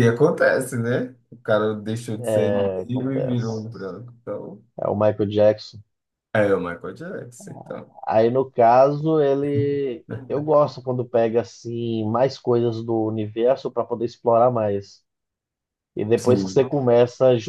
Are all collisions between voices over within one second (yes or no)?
no